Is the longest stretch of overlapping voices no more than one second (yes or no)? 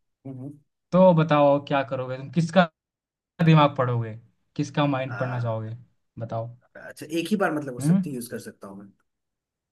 yes